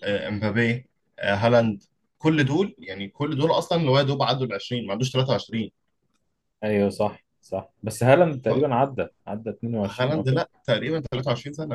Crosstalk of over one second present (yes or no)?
no